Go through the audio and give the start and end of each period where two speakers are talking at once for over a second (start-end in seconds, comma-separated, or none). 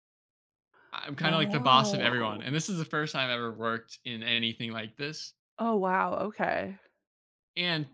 1.2-2.4